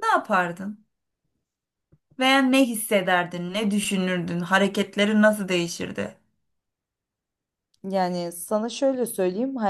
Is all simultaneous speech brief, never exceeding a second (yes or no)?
yes